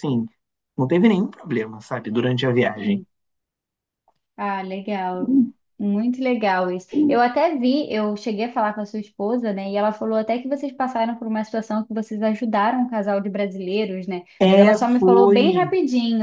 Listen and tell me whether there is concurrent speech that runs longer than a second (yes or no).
yes